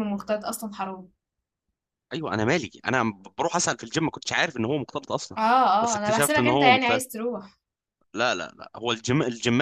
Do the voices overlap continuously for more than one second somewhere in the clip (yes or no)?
yes